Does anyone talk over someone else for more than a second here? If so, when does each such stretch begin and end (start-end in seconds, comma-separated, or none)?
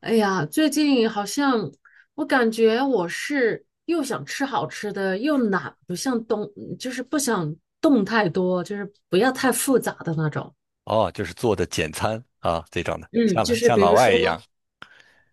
13.1-14.4